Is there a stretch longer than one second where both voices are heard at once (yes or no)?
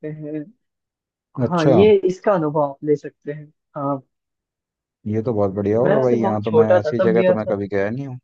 yes